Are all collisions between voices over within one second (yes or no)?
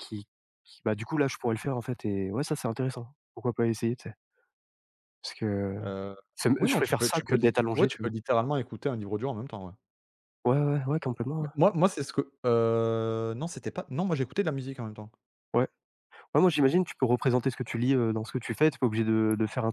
no